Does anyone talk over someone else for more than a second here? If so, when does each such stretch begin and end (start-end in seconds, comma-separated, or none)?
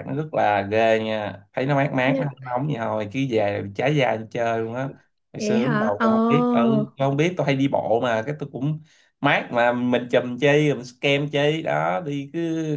5.4-6.6